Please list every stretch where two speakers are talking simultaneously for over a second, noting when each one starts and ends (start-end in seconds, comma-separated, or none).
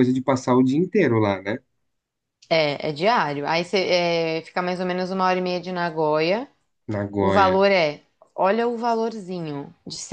none